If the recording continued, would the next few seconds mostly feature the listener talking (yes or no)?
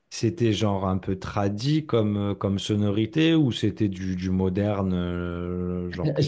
yes